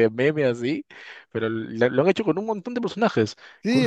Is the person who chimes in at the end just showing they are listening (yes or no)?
no